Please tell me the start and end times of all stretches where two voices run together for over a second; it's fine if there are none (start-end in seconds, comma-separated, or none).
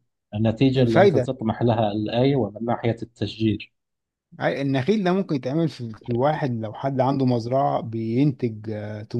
none